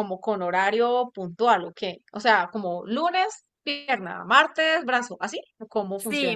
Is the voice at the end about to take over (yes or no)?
yes